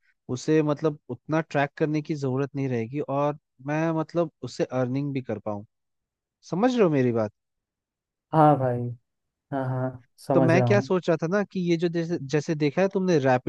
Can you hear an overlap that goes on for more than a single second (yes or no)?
no